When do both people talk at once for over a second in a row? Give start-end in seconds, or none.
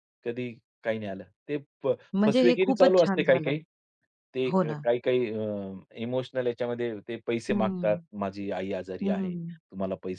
2.3-3.6